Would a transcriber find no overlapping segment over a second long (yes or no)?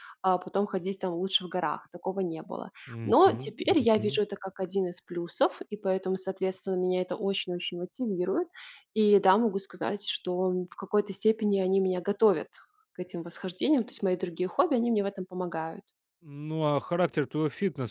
no